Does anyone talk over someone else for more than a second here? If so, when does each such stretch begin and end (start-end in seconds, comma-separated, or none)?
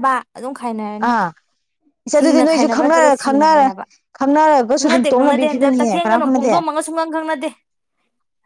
2.2-3.7, 4.8-6.5